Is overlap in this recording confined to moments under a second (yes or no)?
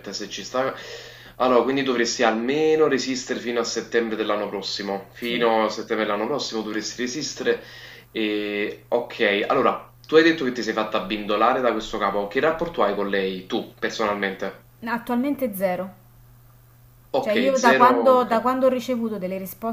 no